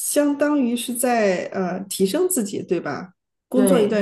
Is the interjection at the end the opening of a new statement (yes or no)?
no